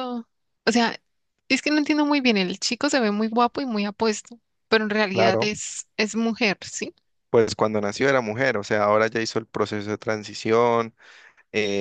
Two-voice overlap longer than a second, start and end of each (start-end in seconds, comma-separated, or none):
none